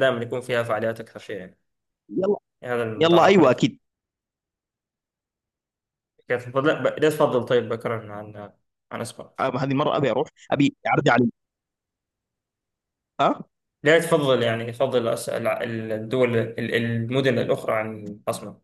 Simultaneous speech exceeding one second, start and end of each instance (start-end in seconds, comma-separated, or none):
none